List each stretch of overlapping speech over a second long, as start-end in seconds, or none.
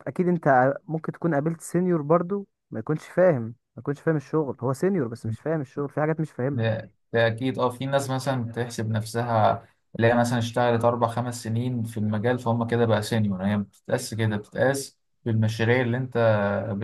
none